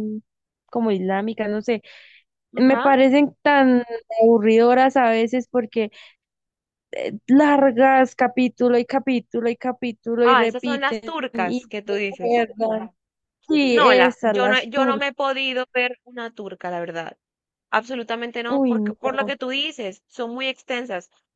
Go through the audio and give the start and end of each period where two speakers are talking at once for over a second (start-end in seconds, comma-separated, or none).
10.2-12.5, 13.7-15.1